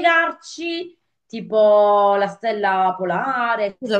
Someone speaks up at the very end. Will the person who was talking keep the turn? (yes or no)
no